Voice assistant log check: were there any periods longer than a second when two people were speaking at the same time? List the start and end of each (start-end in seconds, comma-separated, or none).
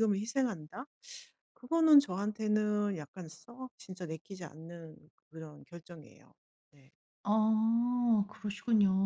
none